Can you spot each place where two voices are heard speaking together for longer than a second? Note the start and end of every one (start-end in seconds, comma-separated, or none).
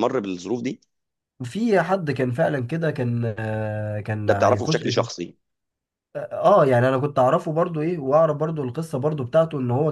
none